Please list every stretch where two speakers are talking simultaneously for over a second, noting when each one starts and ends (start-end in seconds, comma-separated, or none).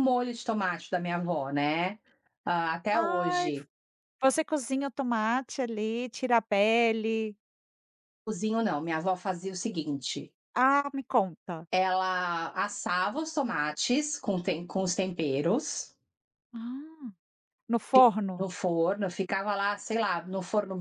none